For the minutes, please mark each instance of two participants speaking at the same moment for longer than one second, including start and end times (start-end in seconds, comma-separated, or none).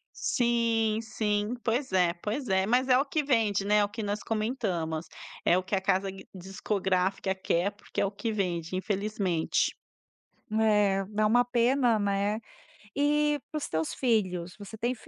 none